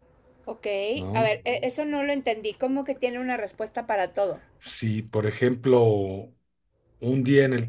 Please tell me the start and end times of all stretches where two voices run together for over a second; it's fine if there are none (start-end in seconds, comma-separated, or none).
none